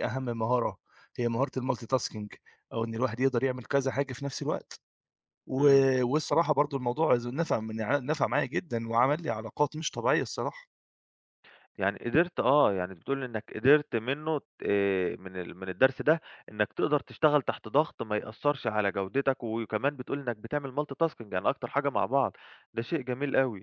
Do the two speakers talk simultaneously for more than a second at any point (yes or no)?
no